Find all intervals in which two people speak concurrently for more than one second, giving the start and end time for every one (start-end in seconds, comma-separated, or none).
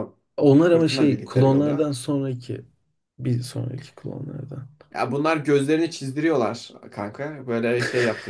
0.6-2.0